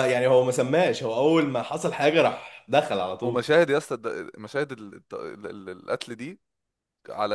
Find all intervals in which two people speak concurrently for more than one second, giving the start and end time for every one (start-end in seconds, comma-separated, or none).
none